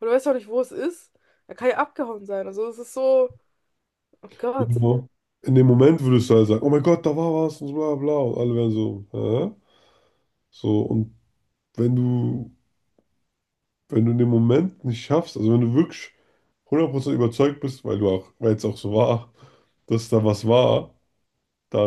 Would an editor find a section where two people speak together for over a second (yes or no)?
no